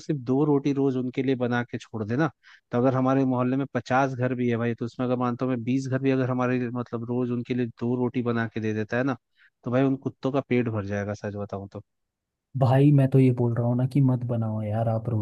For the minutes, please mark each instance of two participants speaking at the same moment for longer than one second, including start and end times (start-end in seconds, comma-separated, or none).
none